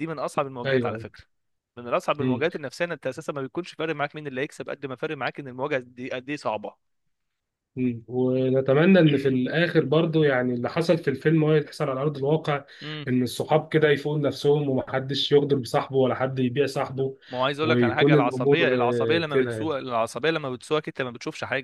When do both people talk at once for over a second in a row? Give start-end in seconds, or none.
17.6-19.7